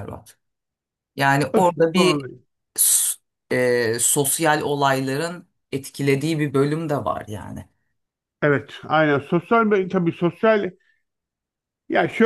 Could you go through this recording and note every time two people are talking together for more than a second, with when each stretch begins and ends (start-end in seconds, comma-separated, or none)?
none